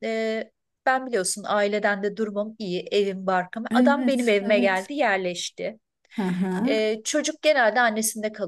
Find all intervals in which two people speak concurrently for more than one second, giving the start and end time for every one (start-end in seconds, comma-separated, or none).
3.7-4.9